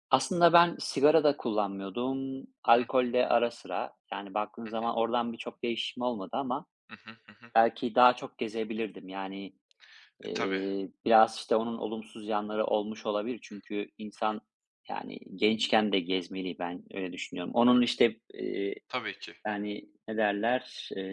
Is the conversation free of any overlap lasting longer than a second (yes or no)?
yes